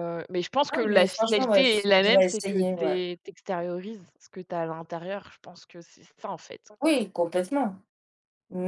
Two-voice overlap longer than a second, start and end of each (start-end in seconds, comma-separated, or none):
0.7-3.0